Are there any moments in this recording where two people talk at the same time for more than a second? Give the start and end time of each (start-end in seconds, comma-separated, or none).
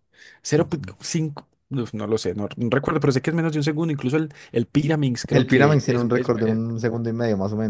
5.3-6.6